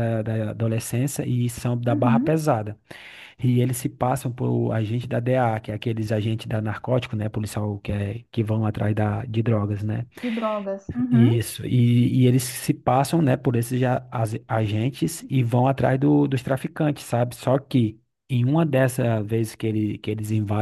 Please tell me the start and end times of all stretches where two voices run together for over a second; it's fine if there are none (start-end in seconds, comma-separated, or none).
none